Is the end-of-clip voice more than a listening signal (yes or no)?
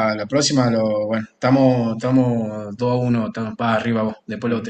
yes